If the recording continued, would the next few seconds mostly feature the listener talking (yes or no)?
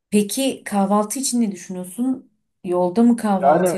yes